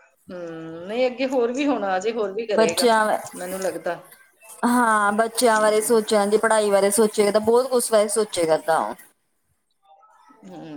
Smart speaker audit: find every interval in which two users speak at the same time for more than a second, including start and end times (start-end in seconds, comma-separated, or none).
none